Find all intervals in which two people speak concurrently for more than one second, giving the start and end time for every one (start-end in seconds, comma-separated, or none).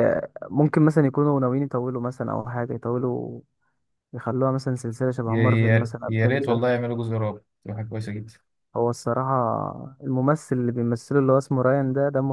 5.2-6.7